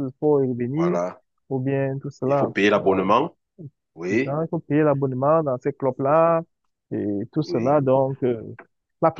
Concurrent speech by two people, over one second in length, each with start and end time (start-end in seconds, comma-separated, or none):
none